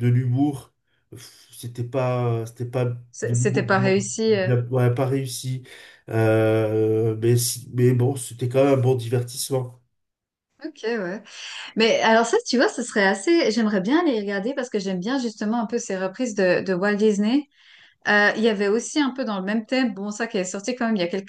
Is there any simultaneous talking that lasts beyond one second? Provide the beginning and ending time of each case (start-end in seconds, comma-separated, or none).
3.1-4.5